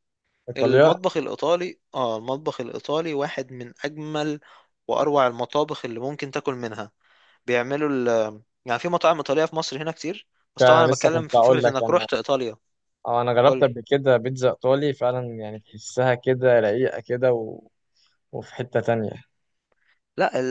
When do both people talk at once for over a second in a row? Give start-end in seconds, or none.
10.6-12.1